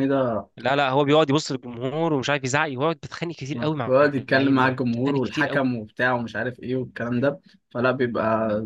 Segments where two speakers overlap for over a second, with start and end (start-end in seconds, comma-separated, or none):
3.9-5.7